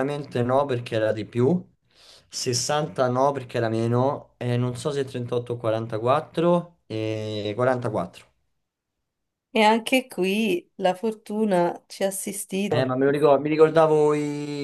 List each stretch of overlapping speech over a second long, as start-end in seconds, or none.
none